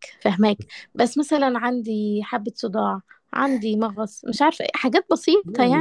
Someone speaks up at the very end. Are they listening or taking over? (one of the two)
taking over